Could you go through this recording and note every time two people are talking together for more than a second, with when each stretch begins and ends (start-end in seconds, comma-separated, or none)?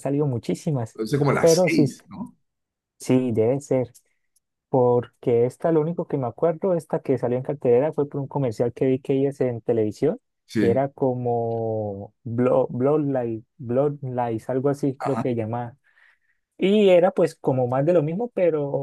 none